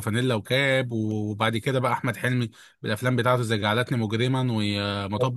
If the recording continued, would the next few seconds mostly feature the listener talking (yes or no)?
no